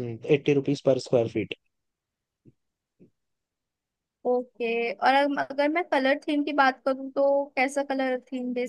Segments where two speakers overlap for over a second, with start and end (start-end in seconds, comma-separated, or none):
none